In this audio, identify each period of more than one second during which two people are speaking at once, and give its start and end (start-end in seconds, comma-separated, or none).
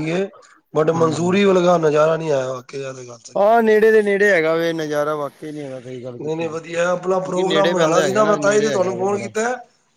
6.2-9.3